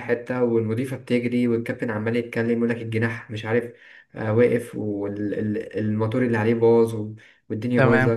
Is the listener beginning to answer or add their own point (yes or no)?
no